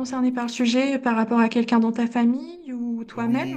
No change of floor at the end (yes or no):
no